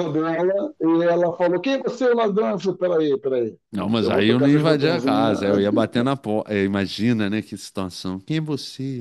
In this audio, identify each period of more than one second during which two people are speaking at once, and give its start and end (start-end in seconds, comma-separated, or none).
4.0-5.3